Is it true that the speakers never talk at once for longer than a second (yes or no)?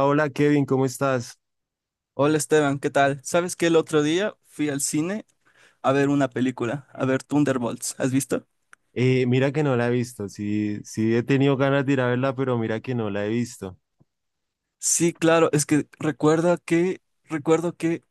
yes